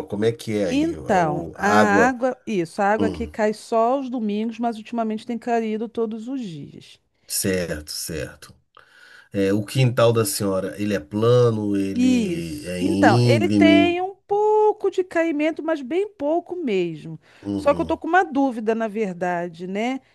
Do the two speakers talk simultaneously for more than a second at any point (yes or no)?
yes